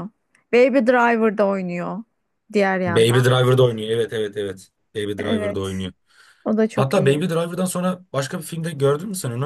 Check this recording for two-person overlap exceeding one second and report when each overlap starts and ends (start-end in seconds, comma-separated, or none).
none